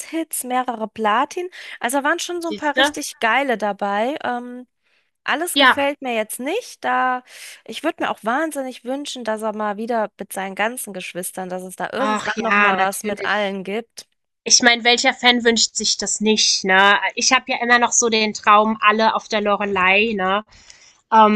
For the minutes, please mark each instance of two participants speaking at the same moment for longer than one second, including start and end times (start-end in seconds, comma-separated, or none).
12.0-13.5